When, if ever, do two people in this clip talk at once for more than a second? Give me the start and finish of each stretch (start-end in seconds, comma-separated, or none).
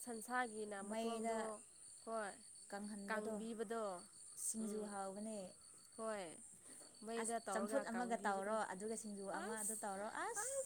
7.2-8.5